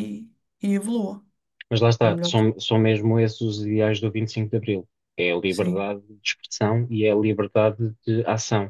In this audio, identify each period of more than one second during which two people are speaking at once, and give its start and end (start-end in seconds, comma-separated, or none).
none